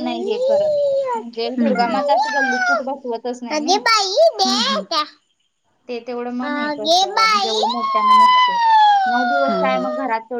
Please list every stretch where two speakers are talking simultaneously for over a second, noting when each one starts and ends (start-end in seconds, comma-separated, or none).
none